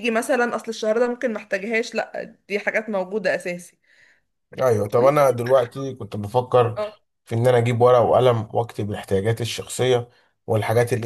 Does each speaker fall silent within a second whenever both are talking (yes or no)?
yes